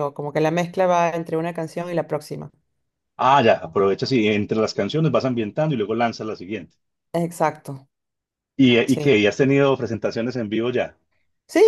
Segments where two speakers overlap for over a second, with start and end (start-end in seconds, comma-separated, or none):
none